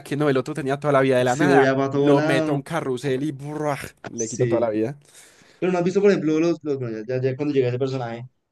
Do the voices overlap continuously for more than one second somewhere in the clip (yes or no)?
yes